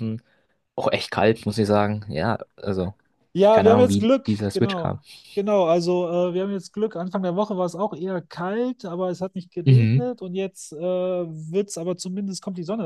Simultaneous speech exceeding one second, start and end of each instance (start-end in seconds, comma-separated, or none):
3.5-5.0